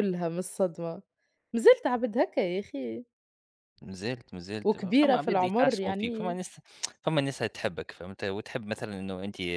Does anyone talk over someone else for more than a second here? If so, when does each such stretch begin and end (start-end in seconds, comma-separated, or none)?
4.6-6.4